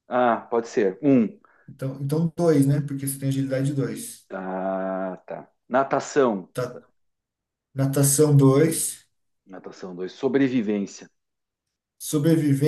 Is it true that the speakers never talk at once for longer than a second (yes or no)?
yes